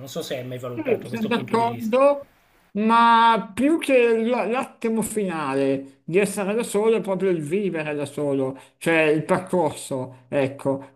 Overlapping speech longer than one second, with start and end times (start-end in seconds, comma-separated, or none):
0.7-1.9